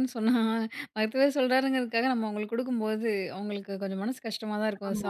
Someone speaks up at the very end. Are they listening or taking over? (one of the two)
taking over